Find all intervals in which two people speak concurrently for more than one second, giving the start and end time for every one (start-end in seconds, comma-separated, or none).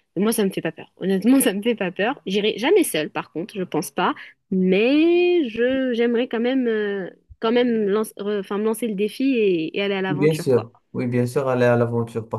none